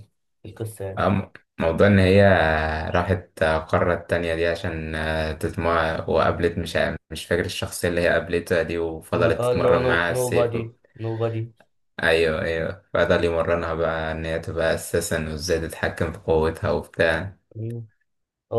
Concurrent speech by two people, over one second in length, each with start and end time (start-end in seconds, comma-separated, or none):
9.1-10.6